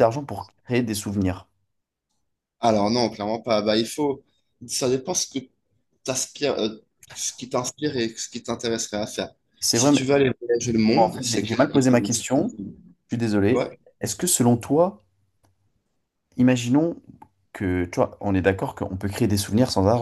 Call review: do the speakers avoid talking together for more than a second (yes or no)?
no